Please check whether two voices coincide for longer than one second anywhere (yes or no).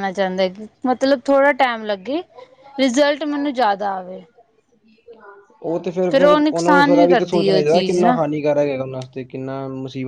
yes